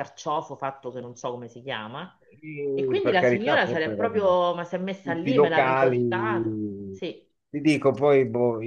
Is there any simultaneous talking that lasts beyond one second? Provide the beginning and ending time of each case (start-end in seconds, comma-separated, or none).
2.7-4.2, 5.0-6.7